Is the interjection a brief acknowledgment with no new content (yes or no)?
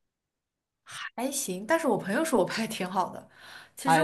no